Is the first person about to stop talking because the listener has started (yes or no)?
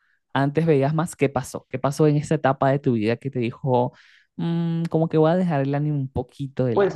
yes